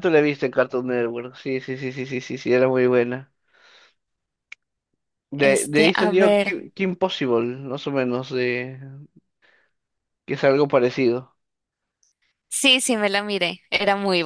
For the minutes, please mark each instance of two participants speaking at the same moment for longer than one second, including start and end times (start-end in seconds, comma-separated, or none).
5.4-6.6